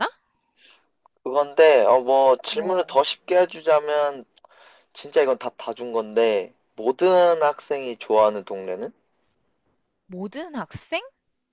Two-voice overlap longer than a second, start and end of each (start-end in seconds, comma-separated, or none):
none